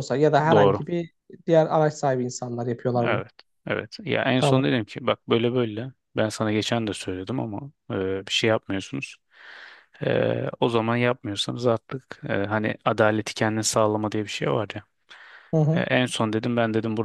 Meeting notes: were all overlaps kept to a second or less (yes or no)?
yes